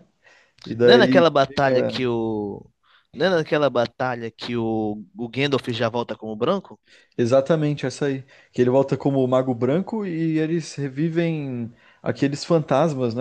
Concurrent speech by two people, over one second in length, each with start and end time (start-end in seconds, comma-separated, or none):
0.8-2.0